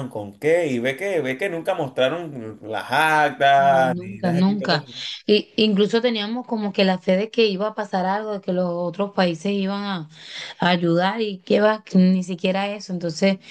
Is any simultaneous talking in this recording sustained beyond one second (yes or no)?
yes